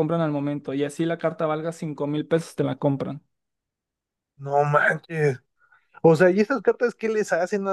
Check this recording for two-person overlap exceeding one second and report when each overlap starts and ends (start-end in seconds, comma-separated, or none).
none